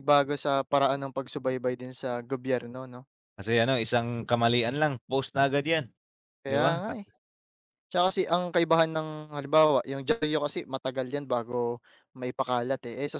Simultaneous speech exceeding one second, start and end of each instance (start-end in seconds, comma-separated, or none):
none